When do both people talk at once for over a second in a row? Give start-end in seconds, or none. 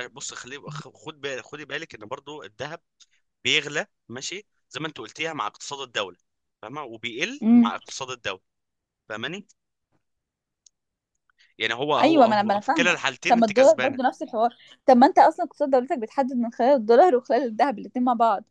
12.0-14.0